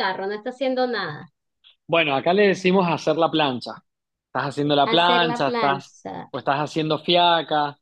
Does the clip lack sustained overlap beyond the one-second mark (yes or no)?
no